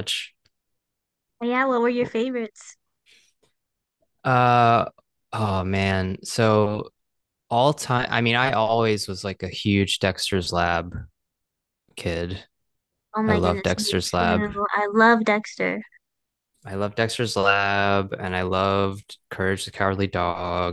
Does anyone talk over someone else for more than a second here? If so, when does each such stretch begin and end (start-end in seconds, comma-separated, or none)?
13.2-14.5